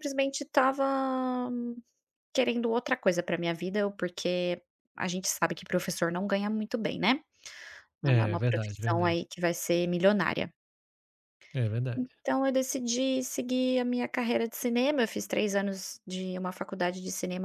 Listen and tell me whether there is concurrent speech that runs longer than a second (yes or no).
yes